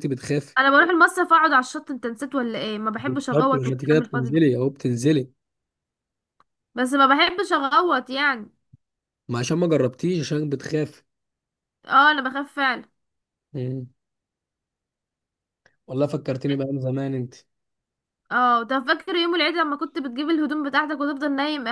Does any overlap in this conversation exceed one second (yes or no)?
yes